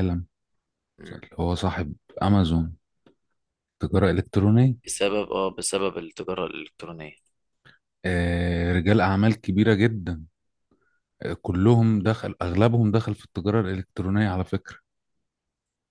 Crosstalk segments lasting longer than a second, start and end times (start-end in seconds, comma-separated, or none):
none